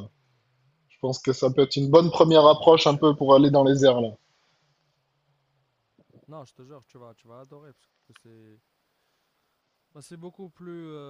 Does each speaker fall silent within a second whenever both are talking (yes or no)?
no